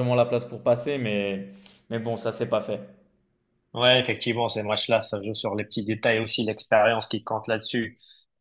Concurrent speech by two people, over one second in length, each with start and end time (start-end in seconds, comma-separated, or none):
none